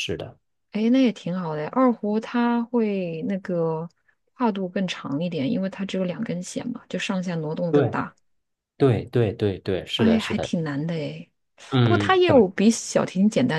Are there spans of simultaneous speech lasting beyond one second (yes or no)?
no